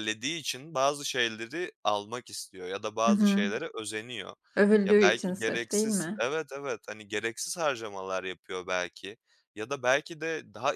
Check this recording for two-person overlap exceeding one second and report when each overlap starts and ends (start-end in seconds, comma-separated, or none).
4.8-6.2